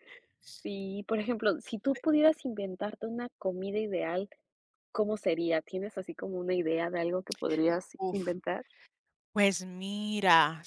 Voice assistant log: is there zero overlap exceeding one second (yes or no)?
yes